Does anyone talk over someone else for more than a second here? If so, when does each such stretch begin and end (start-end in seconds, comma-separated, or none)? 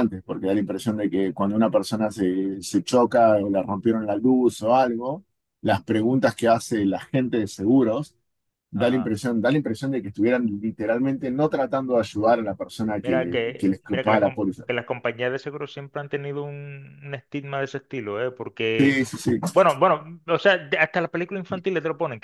13.0-14.7